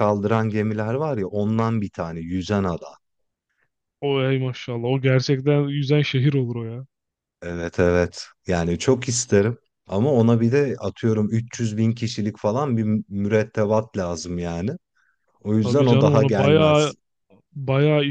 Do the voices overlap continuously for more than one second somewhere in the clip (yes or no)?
yes